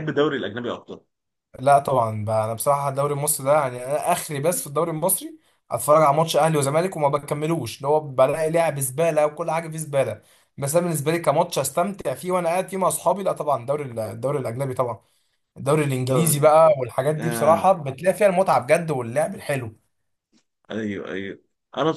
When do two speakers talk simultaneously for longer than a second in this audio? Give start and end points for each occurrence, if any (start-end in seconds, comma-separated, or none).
none